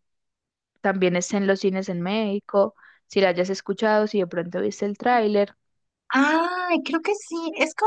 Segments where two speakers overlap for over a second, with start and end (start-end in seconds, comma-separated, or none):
none